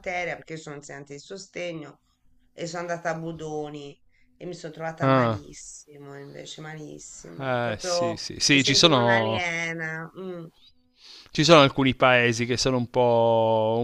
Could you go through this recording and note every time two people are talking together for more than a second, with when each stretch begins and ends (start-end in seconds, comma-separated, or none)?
7.4-9.4